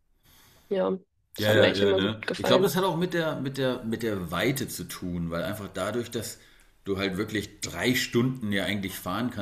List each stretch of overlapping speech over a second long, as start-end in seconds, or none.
1.4-2.7